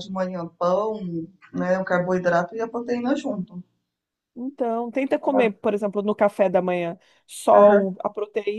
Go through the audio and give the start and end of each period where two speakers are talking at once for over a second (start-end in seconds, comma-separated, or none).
none